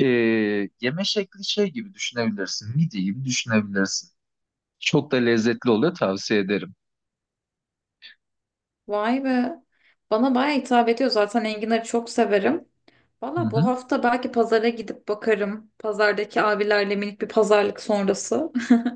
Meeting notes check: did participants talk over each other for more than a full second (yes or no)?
no